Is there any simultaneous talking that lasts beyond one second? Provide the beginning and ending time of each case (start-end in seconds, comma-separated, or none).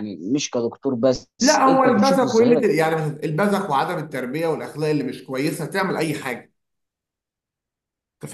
1.4-2.7